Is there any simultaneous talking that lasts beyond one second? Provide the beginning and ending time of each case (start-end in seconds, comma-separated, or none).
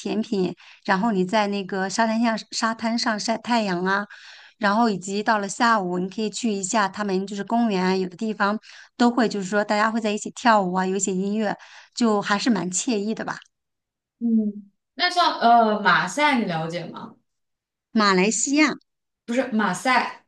none